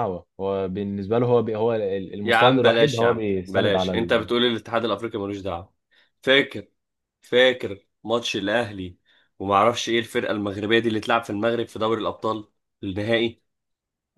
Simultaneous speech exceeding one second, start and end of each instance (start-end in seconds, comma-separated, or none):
2.2-3.9